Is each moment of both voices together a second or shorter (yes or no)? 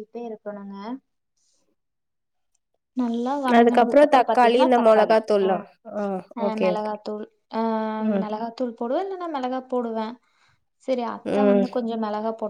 no